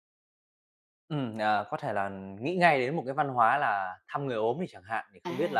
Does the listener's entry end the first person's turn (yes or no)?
no